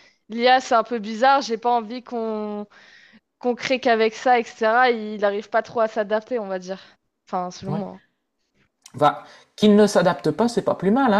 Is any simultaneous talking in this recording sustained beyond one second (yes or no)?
no